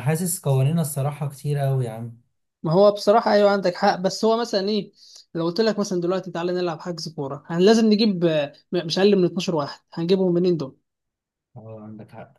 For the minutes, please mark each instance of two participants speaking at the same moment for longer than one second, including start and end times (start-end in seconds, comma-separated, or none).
none